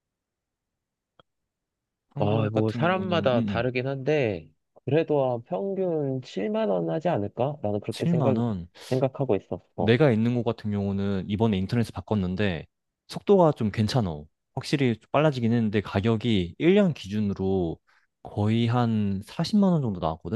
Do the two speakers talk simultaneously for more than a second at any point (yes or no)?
yes